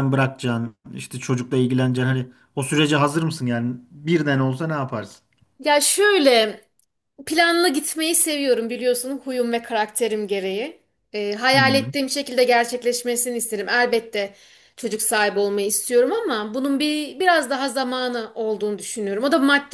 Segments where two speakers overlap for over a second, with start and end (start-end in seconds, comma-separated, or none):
none